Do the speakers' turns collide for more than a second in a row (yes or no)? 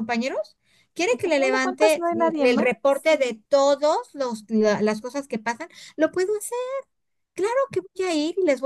yes